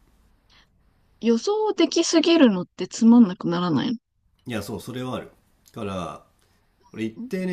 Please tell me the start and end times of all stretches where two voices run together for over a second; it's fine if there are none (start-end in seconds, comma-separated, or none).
none